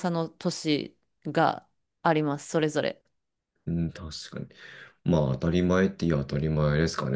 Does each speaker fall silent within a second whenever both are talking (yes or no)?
yes